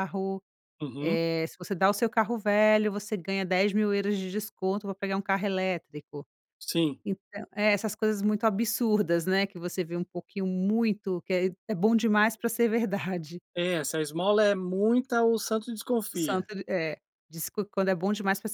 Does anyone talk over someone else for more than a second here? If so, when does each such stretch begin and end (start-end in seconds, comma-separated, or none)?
none